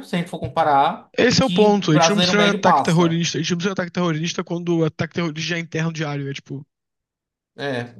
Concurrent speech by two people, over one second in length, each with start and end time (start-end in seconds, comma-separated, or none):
1.2-3.2